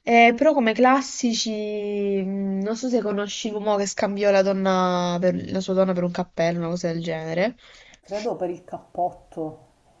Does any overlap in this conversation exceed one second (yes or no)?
no